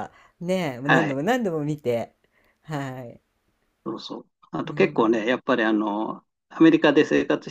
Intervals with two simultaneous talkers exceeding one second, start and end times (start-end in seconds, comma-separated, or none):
none